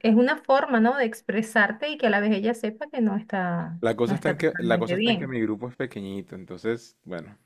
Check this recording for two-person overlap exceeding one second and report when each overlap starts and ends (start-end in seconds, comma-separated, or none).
3.8-5.4